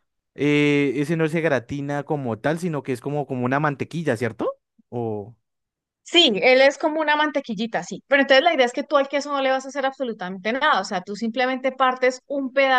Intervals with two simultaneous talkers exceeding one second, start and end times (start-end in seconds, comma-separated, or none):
none